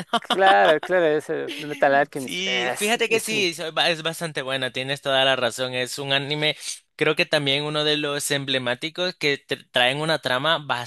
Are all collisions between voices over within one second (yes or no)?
no